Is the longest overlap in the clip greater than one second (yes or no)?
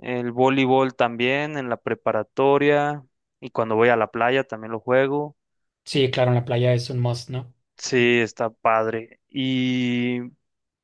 no